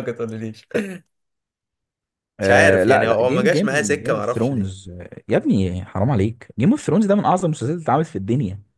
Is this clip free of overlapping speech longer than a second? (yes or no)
no